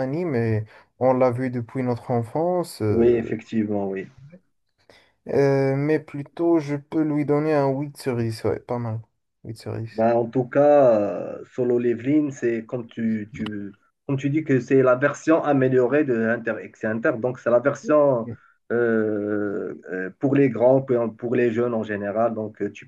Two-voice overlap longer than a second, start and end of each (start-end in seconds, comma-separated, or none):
none